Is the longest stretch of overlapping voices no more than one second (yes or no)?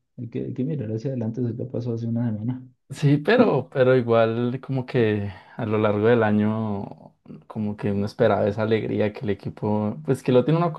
yes